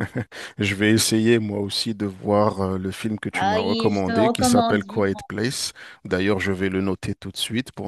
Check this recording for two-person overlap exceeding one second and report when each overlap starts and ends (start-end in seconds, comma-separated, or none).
3.3-5.2